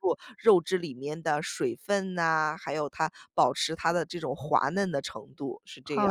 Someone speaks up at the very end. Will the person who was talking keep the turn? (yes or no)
no